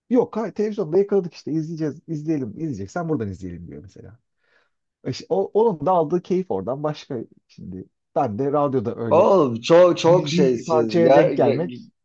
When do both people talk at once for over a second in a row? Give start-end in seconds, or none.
10.0-11.3